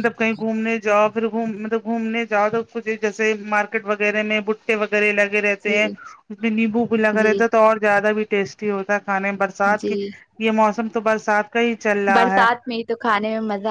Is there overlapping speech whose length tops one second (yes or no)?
no